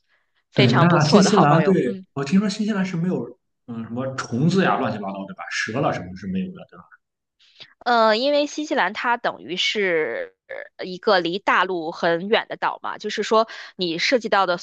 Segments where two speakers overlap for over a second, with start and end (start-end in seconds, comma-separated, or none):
0.5-2.0